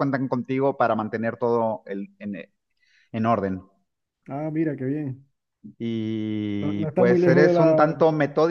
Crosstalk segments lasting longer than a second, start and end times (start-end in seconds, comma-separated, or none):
6.6-7.9